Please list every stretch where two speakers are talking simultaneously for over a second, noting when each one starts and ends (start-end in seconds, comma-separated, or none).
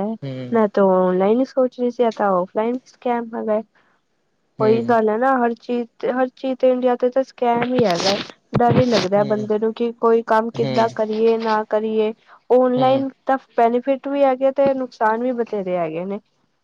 none